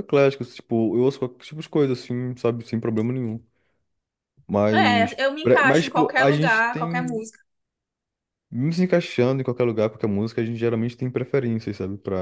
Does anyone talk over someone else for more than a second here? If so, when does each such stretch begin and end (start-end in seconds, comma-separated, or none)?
4.7-7.2